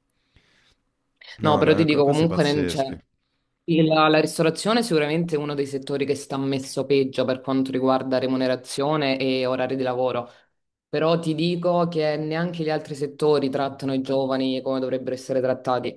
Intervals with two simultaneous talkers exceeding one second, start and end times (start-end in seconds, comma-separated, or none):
1.4-2.8